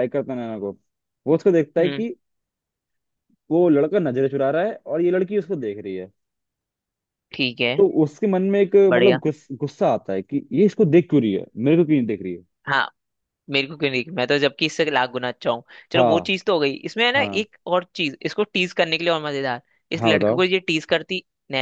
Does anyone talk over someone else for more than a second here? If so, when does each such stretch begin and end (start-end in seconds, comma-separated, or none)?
none